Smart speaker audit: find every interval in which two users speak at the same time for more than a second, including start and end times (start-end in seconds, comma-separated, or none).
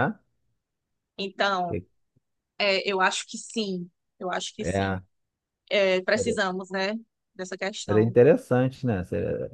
none